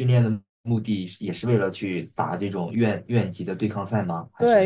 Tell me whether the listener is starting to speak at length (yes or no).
yes